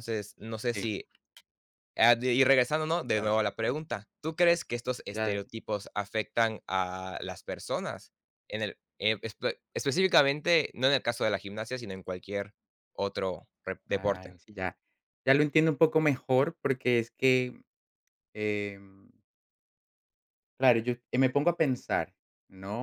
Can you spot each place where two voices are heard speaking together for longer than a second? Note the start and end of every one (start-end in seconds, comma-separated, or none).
none